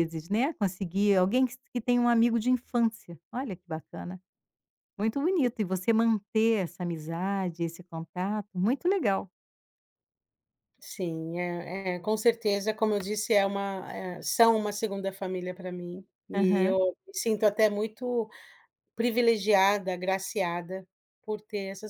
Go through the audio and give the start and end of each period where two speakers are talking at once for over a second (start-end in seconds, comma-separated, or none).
none